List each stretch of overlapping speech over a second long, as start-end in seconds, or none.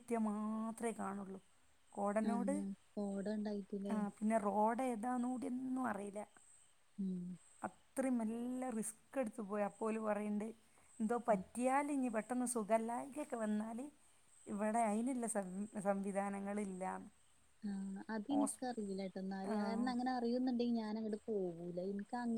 none